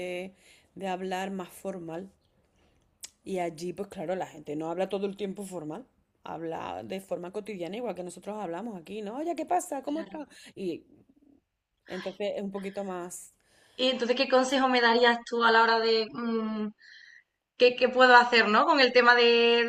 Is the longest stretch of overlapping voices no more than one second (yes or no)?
yes